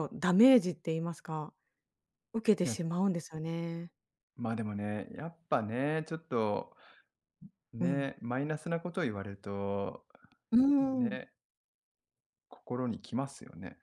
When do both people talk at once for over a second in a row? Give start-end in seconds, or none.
none